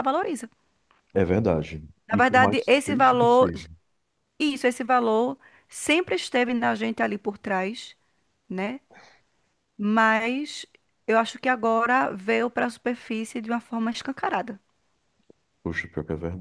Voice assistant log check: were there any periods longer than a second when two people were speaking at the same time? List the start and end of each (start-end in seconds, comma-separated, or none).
2.1-3.5